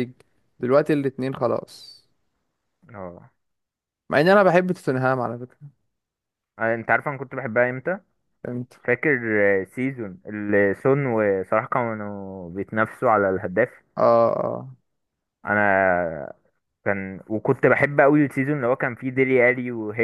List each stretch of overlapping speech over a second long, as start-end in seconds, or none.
none